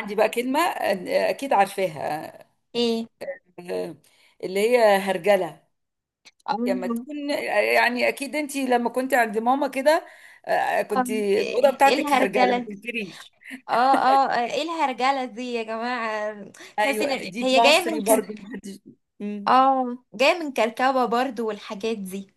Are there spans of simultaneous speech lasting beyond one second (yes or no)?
yes